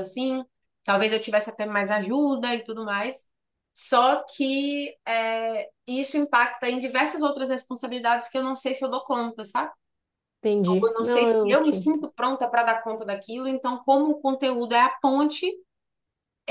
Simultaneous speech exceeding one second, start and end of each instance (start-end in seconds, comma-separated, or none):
10.8-12.1